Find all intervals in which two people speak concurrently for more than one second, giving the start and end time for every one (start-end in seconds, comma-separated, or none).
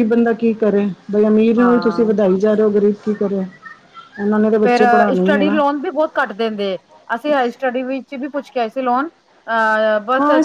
none